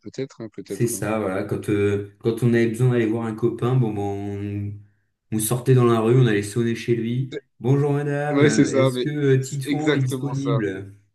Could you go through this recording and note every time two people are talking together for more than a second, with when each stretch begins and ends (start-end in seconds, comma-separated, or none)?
8.3-10.6